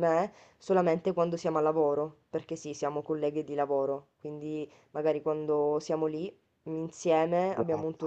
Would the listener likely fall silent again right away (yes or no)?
yes